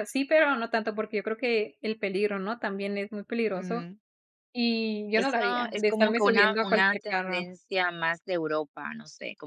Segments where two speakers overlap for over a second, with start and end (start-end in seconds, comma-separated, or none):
5.1-7.5